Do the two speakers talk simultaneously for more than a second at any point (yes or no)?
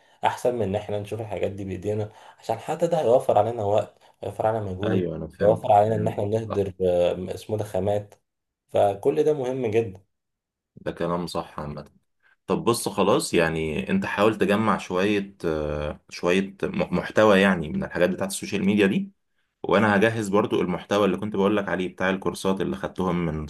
yes